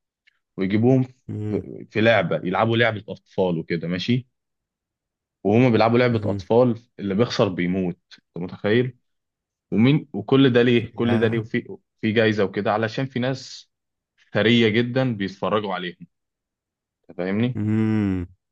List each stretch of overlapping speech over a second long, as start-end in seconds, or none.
none